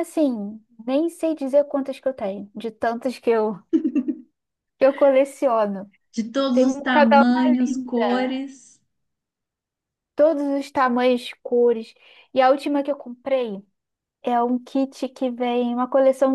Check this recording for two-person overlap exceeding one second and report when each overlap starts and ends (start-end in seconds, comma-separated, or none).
6.5-8.4